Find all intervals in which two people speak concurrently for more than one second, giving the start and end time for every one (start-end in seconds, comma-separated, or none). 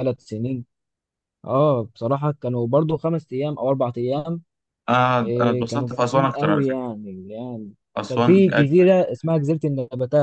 5.2-6.9, 8.1-9.4